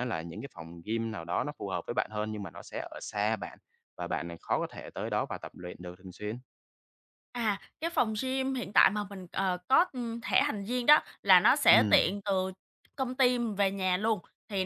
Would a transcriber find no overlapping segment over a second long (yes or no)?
yes